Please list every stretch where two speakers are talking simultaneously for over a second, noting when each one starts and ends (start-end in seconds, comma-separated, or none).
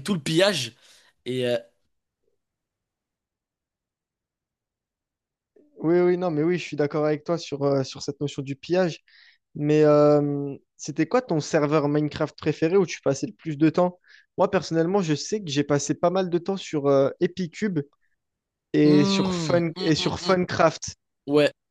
18.8-20.3